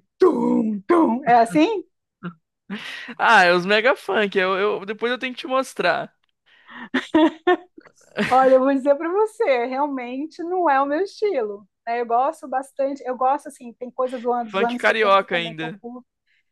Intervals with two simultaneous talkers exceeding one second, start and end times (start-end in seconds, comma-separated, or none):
14.5-15.8